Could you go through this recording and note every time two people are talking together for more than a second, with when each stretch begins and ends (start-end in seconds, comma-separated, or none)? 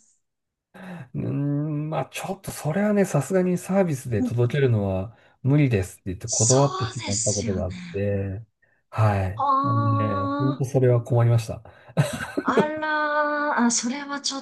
6.2-8.1, 9.4-10.8